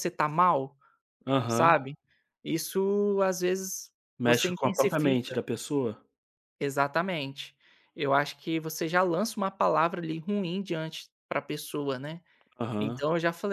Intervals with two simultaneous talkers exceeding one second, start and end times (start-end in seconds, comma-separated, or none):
4.2-5.4